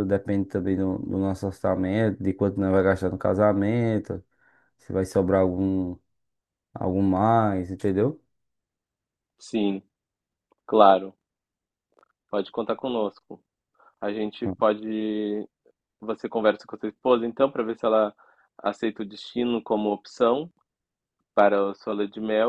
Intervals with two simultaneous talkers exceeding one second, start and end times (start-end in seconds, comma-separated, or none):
none